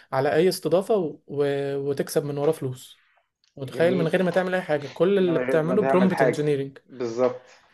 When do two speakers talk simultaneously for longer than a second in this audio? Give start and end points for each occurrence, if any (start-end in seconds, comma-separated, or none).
5.2-6.8